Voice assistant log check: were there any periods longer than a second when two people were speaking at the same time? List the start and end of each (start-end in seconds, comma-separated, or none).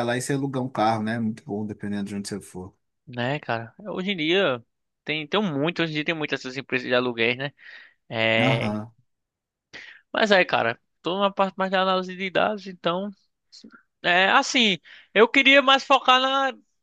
none